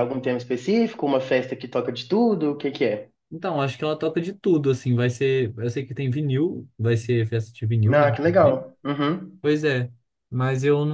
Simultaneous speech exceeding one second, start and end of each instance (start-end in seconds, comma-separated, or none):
none